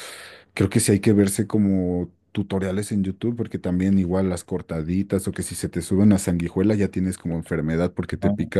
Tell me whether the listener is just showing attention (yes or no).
yes